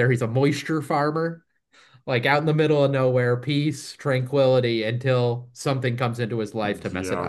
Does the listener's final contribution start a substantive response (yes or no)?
yes